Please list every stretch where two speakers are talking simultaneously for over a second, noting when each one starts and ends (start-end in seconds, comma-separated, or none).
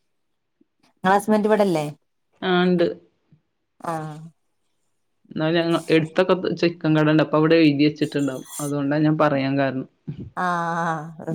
none